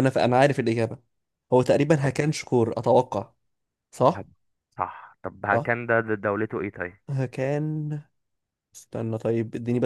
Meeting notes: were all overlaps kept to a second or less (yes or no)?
yes